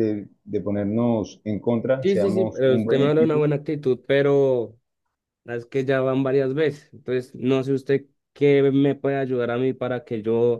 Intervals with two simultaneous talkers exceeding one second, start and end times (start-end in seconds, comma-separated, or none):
2.0-3.5